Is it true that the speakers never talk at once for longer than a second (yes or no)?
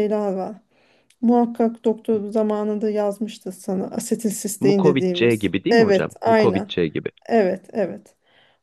no